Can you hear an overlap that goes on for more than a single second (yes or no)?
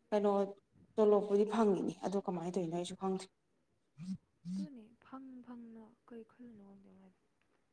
no